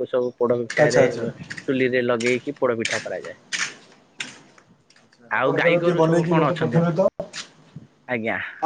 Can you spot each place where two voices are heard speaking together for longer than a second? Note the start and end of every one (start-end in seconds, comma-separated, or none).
5.4-7.0